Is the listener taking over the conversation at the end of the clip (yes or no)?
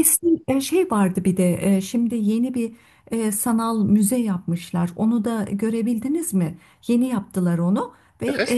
no